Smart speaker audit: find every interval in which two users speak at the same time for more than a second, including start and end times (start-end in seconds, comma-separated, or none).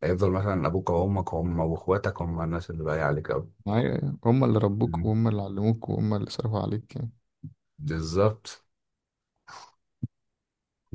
none